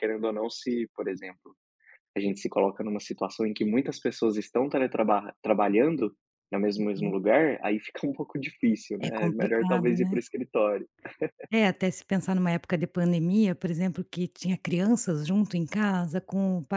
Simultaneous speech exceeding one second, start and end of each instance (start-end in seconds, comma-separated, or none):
9.0-10.2